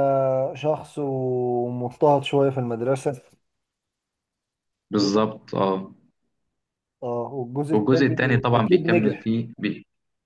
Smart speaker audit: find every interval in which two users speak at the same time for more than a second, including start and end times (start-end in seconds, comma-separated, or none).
7.7-9.3